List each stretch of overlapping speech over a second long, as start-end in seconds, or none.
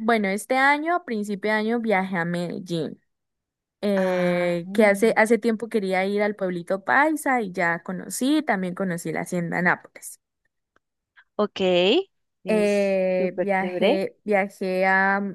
4.0-5.2, 12.5-14.0